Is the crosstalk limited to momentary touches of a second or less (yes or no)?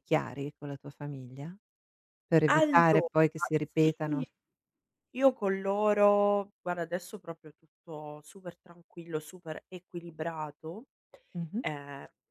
yes